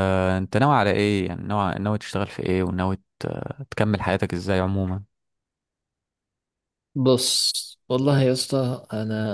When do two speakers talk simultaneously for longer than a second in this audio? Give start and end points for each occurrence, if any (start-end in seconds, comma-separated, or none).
none